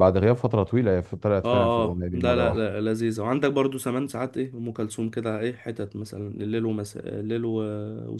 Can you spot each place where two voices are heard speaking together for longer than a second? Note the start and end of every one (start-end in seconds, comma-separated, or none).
1.4-2.7